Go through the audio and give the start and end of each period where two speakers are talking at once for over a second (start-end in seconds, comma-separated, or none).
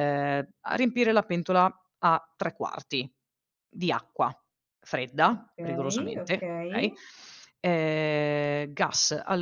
5.3-6.9